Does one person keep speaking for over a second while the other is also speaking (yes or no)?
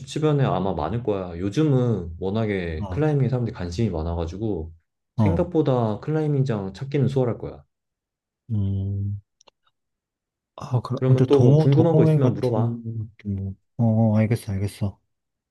yes